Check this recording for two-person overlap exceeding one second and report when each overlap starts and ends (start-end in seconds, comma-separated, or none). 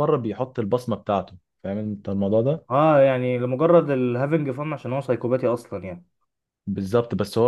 none